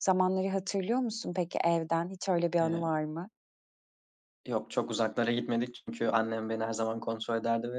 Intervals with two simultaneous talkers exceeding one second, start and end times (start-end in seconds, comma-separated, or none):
none